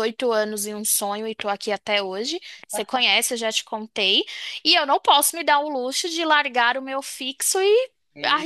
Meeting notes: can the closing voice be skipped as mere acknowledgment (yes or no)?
yes